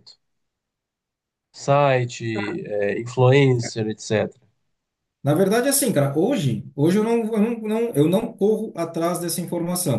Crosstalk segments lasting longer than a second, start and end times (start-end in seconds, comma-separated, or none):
none